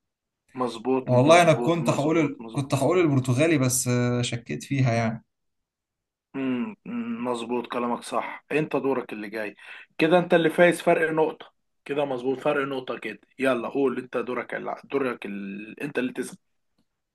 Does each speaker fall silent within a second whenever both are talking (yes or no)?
no